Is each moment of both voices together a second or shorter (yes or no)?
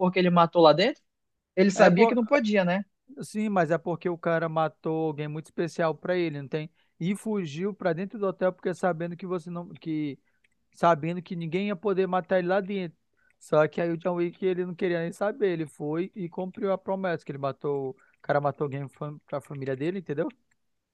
yes